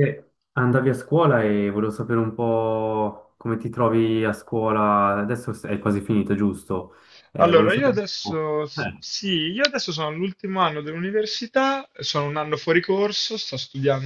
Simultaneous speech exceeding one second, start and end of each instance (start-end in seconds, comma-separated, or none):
7.4-9.0